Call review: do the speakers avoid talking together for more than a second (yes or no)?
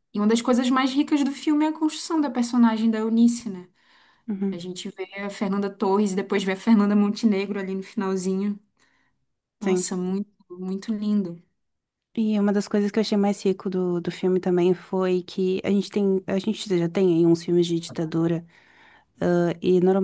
yes